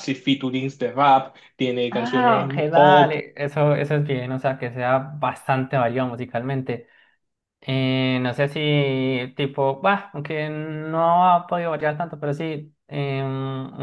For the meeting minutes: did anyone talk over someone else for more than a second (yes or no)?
yes